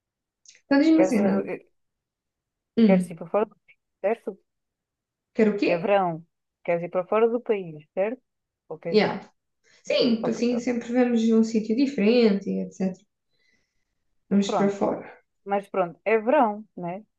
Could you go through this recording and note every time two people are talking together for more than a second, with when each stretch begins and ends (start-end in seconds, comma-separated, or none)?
none